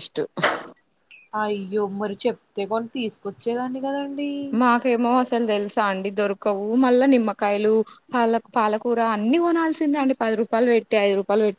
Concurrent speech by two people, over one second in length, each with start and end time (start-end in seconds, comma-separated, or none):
none